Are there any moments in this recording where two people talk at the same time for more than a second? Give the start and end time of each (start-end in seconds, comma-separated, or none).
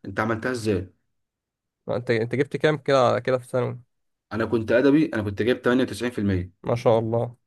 none